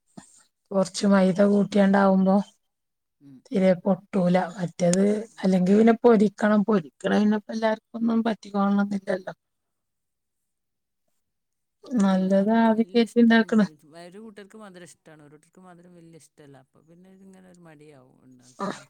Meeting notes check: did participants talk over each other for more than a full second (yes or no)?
no